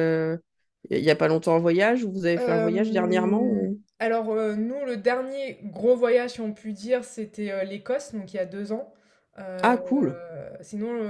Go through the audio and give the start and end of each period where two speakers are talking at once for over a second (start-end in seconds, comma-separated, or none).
2.4-3.8